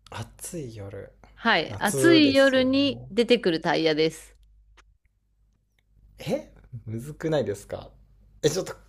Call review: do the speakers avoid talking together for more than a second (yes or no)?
no